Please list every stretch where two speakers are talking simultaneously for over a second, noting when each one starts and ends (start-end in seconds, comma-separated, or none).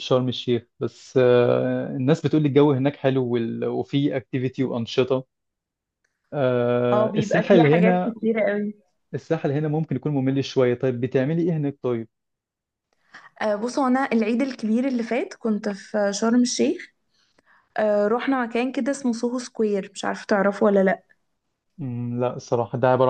6.9-8.1